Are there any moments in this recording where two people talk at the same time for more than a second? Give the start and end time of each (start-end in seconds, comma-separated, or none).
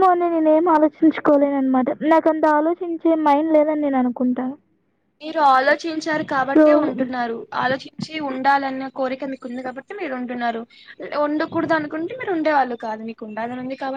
none